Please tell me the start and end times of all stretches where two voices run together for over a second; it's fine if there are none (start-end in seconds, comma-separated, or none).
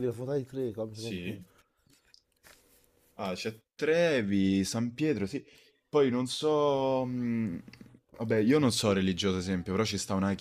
none